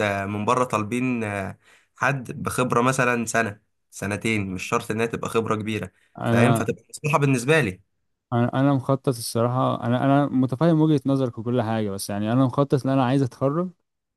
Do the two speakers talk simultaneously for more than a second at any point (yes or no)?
no